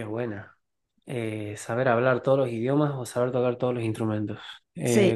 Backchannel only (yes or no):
yes